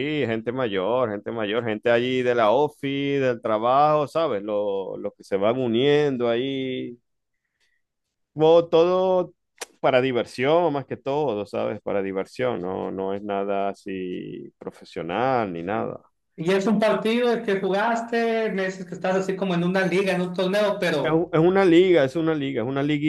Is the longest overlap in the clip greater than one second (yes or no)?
no